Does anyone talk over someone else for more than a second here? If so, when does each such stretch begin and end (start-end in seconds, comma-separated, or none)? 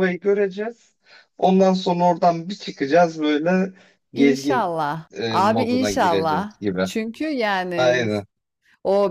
4.1-6.9